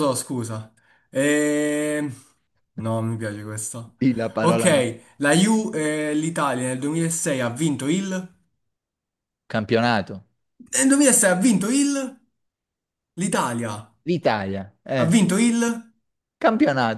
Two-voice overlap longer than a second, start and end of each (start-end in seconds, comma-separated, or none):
none